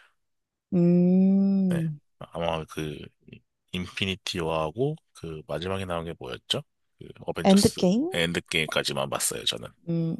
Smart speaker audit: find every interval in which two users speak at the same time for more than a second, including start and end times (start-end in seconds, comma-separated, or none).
none